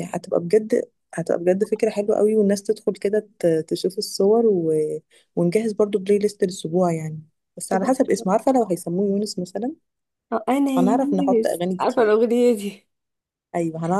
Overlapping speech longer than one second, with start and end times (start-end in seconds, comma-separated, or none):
10.8-12.2